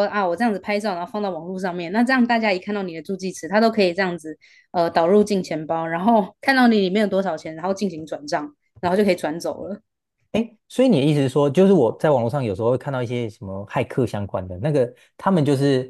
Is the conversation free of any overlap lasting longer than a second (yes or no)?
yes